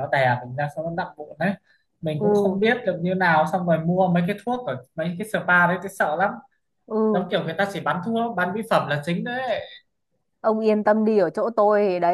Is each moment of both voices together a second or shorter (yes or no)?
yes